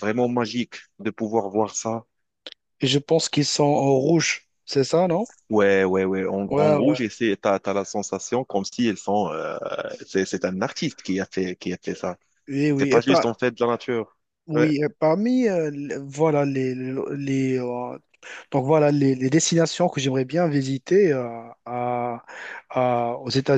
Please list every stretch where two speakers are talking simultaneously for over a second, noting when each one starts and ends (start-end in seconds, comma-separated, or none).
none